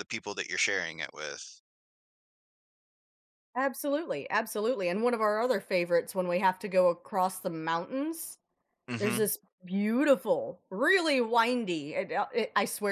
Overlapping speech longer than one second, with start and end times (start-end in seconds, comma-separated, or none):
none